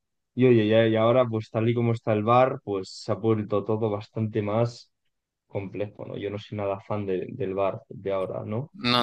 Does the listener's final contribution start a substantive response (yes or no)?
yes